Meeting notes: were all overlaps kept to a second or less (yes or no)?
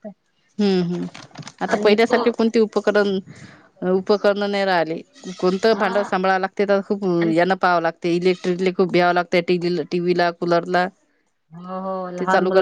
yes